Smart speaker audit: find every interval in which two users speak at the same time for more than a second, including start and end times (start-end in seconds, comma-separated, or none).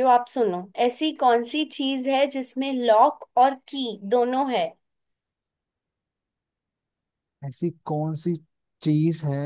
none